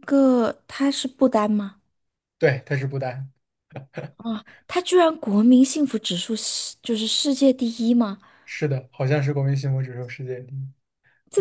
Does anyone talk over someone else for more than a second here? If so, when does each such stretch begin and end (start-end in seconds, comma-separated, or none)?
none